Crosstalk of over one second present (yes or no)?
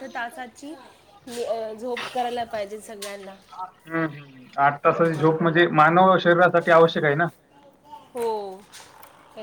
no